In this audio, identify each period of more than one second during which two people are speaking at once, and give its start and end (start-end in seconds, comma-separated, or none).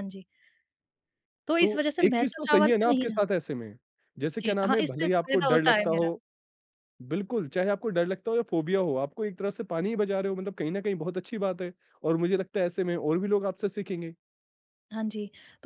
1.6-3.2, 4.4-6.1